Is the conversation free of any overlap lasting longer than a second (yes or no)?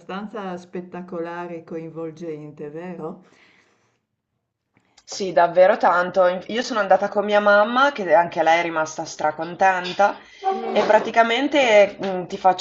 yes